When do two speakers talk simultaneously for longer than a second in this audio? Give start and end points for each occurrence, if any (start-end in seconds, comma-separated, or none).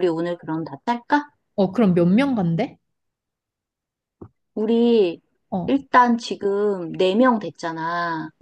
none